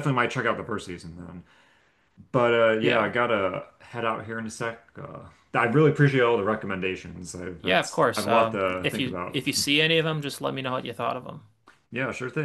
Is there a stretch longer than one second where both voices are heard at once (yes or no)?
yes